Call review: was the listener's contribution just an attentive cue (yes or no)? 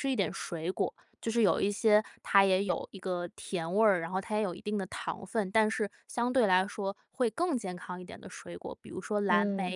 yes